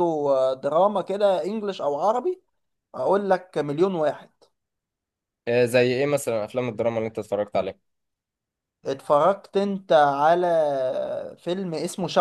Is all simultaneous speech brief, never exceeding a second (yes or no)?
yes